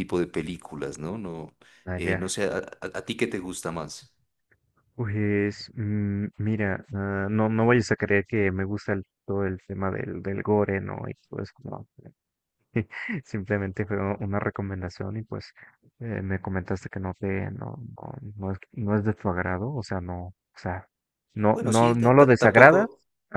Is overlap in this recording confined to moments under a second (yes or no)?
no